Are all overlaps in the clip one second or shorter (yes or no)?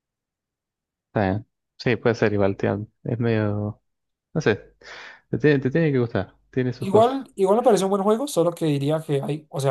yes